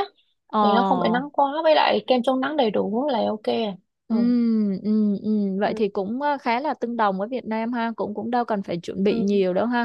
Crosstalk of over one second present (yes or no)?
no